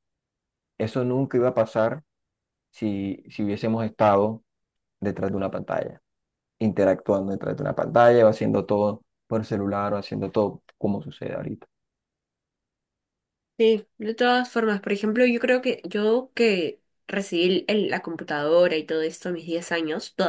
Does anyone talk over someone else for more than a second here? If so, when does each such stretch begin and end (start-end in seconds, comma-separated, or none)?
none